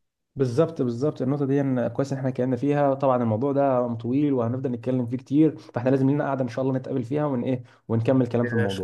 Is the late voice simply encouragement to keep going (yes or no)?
no